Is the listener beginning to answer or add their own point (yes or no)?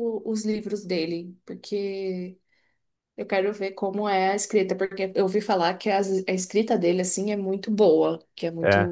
no